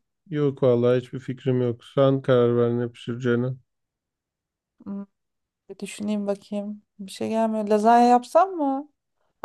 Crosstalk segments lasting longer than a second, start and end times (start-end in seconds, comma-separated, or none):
none